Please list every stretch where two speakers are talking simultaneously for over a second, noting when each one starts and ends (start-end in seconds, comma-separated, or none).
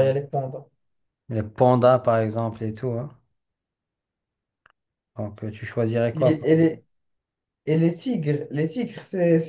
none